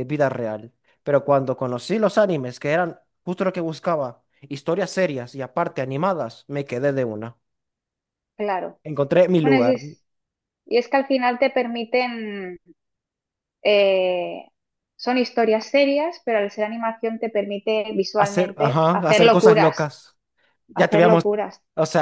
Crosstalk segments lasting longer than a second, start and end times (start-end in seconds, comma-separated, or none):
18.1-19.9